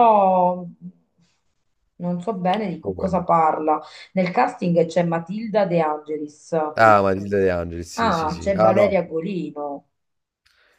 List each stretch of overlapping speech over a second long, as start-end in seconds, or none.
7.9-9.2